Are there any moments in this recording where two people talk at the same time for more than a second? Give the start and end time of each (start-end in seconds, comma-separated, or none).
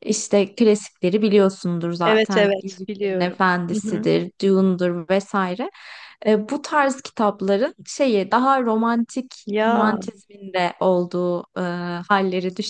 2.0-4.1